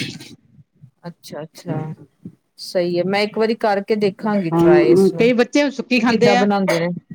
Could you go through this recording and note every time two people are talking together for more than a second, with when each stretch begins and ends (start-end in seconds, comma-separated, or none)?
4.5-6.5